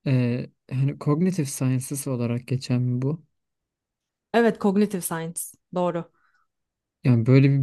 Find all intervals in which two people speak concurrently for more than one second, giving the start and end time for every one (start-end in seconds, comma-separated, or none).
none